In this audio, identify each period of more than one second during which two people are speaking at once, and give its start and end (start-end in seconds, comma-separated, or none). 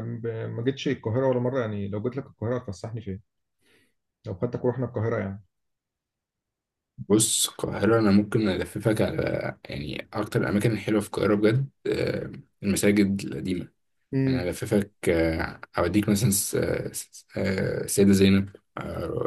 none